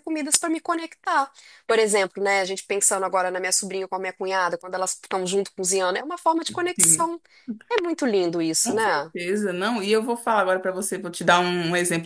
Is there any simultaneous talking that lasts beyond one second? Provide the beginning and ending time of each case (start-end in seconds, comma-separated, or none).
none